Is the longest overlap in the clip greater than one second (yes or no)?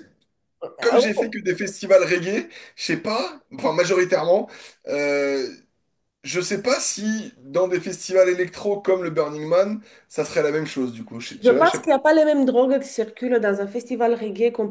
no